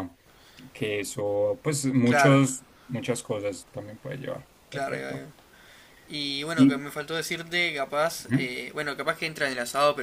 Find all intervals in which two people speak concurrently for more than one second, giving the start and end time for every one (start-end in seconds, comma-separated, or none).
none